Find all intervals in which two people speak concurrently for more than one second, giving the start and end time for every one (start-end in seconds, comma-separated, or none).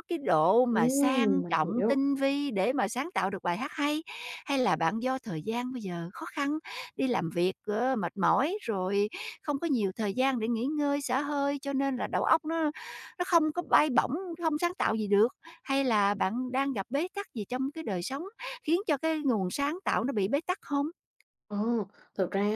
0.7-2.0